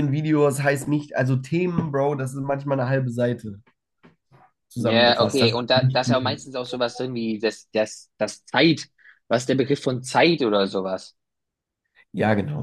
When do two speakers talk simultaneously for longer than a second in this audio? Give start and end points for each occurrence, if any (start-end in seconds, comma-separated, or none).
4.7-6.4